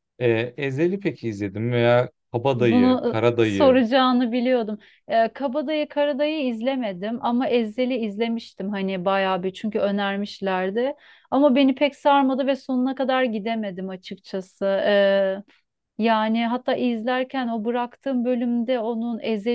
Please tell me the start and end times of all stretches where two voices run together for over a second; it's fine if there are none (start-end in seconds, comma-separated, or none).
2.5-3.8